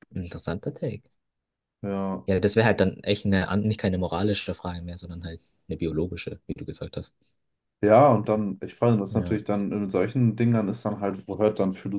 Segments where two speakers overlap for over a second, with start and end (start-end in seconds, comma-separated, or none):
none